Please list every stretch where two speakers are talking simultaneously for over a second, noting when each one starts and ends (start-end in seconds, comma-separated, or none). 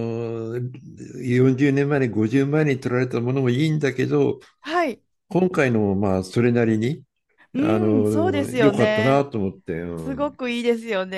7.6-9.2